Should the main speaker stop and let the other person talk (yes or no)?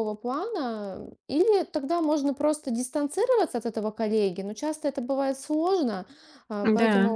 no